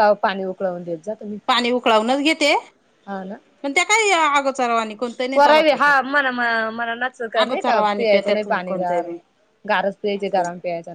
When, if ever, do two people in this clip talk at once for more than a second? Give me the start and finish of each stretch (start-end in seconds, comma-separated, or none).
7.4-9.1